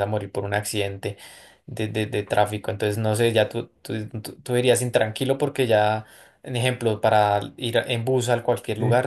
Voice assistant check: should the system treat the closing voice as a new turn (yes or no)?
no